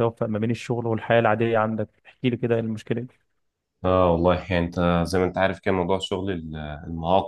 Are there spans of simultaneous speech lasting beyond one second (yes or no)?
no